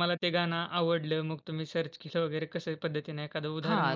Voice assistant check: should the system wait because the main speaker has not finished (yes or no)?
no